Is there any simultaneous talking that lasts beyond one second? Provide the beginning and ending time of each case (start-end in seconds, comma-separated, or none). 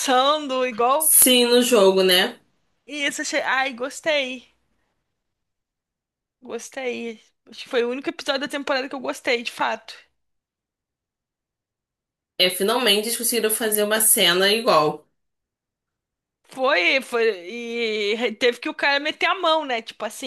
none